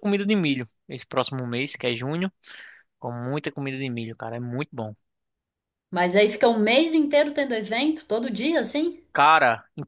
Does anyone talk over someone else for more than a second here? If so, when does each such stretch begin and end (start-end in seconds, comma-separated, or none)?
none